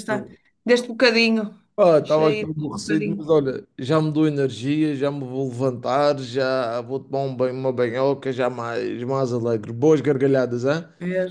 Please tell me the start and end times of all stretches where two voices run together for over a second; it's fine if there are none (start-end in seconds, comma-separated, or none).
2.0-3.3